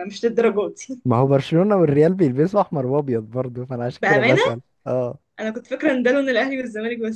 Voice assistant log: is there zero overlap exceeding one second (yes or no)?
yes